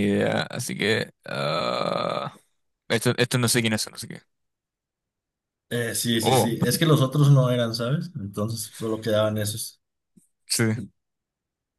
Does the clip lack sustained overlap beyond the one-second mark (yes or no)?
yes